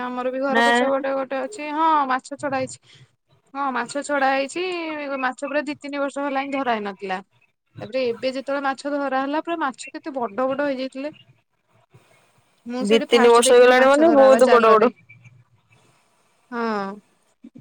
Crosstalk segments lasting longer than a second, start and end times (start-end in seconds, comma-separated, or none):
12.9-14.8